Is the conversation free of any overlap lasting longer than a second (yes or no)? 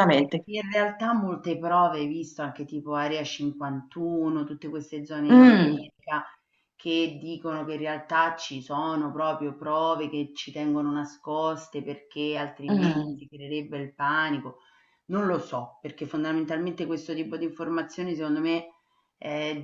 yes